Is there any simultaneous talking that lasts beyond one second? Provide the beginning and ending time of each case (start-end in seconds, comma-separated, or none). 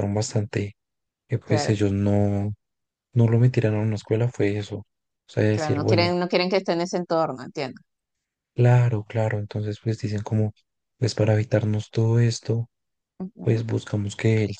none